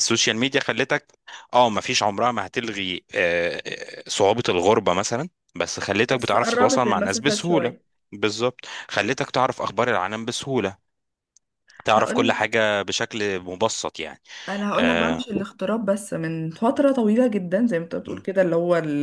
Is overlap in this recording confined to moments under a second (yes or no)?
no